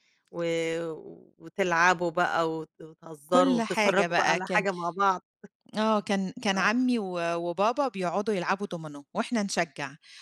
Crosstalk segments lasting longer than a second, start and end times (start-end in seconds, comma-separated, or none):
3.3-4.7